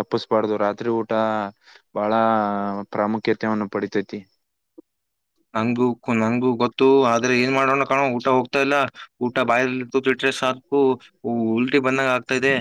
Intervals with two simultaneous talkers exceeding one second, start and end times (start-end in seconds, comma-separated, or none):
none